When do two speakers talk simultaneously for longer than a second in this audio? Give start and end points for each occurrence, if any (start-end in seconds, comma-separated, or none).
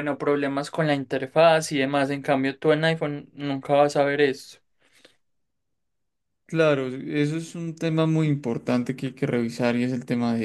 none